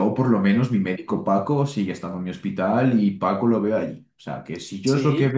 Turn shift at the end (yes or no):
yes